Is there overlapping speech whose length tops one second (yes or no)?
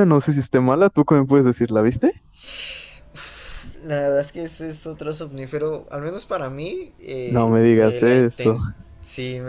yes